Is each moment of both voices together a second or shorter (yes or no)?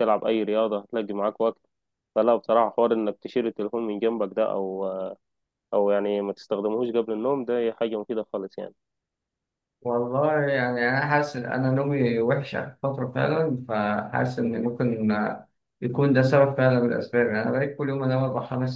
yes